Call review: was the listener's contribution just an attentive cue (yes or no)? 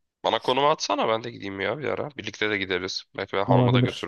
no